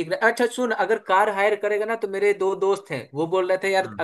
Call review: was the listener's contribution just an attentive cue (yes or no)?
yes